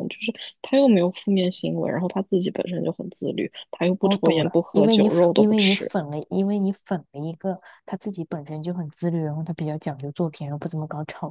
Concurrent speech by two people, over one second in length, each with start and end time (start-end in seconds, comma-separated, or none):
4.0-5.9